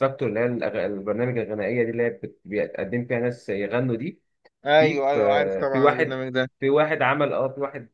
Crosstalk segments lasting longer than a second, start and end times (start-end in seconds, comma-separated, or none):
4.8-6.2